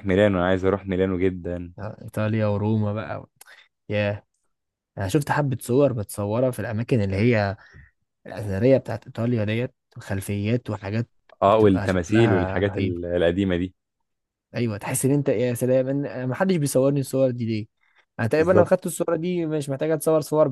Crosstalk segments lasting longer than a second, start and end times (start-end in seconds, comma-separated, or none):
11.5-13.0